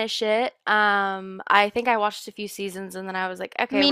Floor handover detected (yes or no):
no